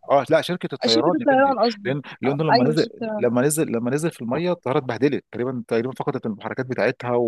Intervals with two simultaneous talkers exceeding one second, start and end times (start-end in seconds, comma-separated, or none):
0.9-3.3